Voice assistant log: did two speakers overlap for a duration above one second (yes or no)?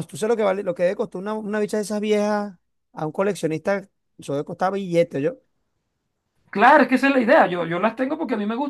no